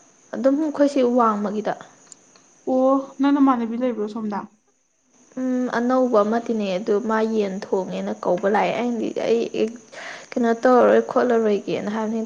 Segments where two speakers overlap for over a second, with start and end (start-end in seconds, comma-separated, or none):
none